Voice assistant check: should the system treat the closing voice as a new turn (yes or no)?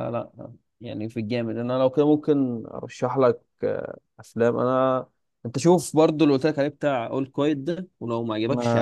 yes